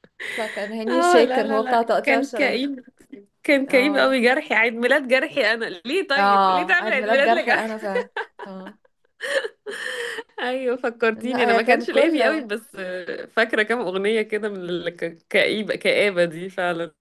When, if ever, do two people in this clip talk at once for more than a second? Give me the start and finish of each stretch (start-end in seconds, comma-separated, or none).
0.9-2.7, 6.2-7.7, 11.2-12.5